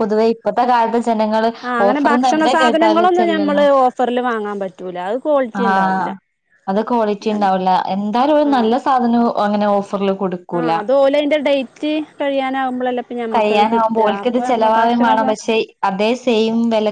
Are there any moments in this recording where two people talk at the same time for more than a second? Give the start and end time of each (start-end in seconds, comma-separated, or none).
1.9-3.6, 13.3-15.3